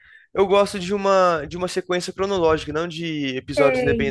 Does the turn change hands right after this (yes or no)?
yes